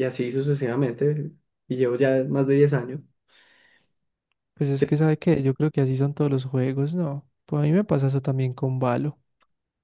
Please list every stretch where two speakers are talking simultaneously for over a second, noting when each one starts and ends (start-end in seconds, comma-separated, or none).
none